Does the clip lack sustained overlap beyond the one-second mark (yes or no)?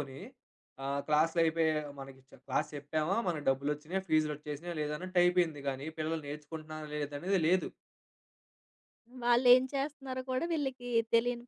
yes